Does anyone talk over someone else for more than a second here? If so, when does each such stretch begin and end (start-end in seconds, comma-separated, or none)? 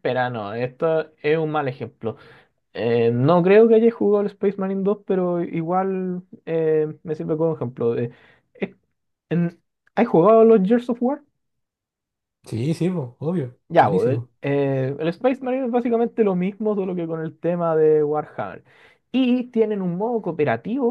none